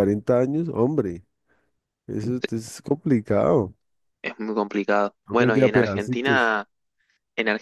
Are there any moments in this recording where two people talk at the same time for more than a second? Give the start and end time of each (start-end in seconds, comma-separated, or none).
5.3-6.5